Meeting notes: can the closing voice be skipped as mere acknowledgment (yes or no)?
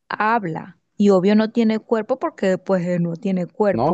no